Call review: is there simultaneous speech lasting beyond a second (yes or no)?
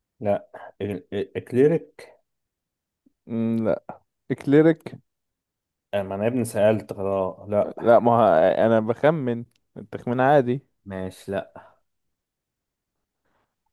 no